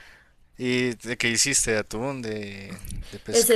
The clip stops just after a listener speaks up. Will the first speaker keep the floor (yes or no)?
no